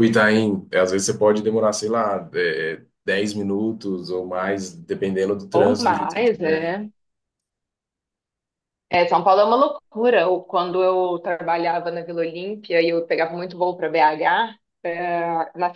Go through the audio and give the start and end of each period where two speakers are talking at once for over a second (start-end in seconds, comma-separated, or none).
5.5-6.7